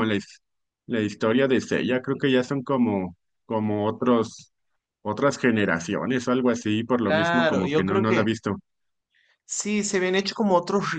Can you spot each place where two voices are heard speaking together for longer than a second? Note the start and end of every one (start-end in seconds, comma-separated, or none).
7.0-8.2